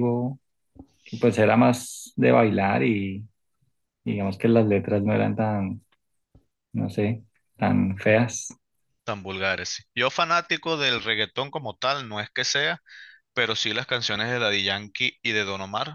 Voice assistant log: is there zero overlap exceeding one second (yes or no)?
yes